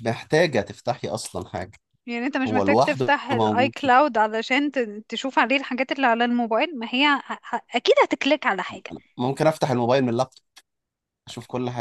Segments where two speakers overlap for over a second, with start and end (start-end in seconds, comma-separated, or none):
2.5-3.9